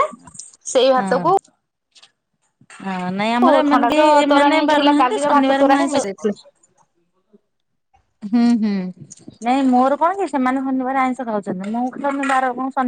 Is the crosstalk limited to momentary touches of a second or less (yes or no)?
no